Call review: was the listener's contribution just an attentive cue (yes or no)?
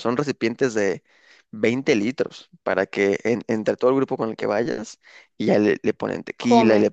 yes